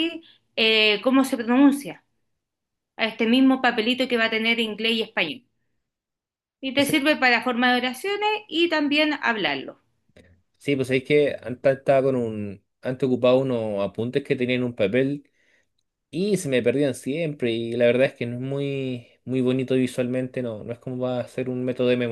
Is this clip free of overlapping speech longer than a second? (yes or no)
yes